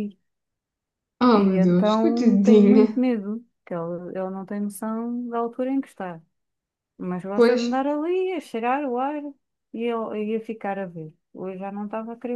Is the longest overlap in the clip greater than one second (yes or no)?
yes